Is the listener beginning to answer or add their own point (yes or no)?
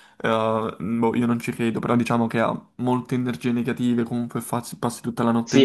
yes